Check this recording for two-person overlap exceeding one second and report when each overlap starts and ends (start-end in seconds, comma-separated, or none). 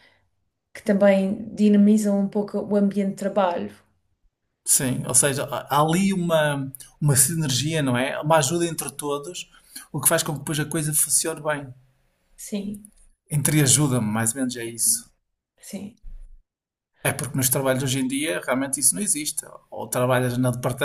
none